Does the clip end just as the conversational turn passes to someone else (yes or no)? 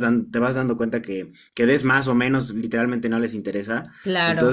no